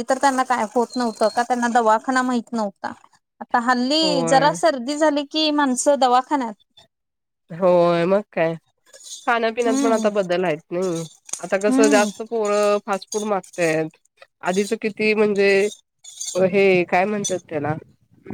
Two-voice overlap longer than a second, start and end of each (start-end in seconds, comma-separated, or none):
none